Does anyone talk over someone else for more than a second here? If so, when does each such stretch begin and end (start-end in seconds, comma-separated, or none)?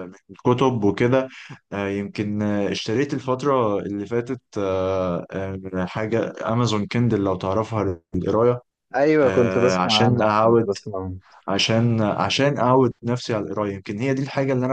9.2-10.7